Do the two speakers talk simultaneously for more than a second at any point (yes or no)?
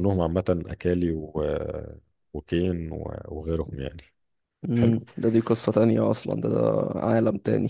no